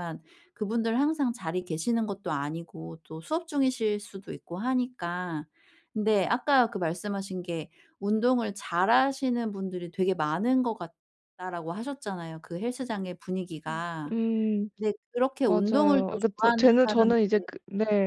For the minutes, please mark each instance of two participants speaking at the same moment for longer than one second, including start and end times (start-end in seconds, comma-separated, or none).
15.4-17.5